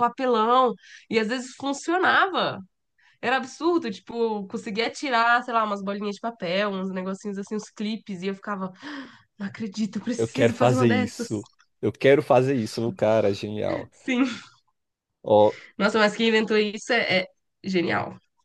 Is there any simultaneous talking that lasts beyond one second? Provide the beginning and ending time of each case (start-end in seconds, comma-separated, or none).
10.2-11.4